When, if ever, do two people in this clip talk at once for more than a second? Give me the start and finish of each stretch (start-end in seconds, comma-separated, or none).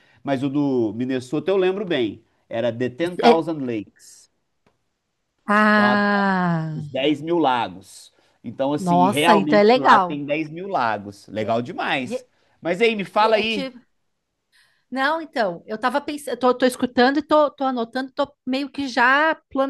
8.8-10.2